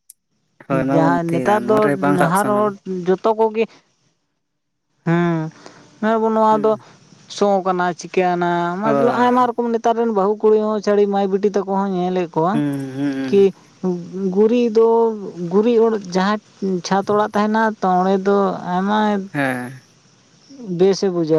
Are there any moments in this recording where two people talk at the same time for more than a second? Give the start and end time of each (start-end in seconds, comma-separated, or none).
0.9-2.7